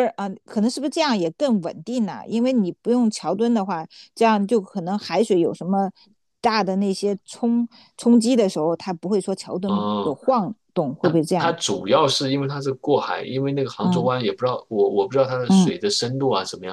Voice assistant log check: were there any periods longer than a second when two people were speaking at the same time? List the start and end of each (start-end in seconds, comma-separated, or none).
none